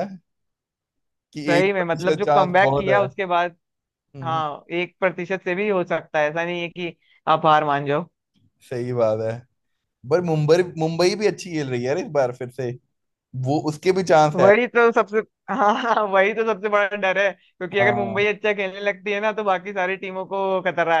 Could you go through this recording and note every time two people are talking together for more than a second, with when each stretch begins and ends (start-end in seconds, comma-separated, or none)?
1.5-3.0